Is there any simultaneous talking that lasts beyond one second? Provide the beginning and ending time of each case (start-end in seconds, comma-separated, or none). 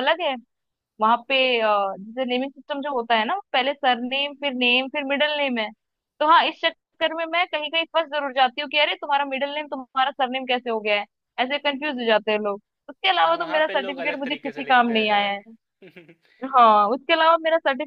13.2-15.3